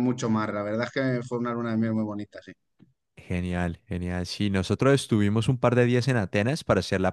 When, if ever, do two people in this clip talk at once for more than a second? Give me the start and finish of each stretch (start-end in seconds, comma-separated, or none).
none